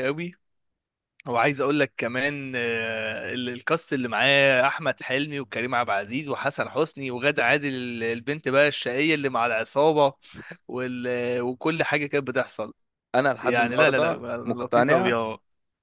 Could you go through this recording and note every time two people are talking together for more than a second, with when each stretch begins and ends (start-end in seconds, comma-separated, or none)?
13.4-15.2